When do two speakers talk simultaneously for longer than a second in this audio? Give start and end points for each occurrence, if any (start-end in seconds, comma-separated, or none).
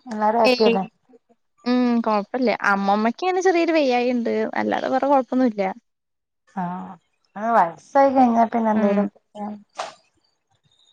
none